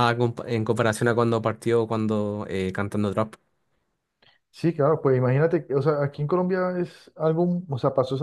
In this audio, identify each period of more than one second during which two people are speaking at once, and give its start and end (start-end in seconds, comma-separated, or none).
none